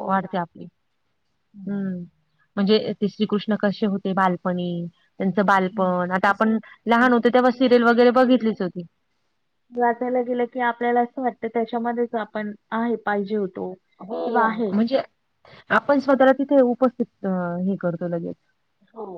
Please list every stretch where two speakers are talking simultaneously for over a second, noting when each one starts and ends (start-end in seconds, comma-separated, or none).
none